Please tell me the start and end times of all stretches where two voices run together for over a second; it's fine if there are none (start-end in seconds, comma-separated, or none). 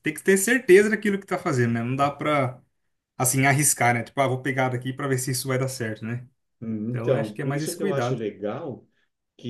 6.9-8.2